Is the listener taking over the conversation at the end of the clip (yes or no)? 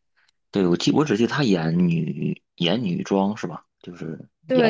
yes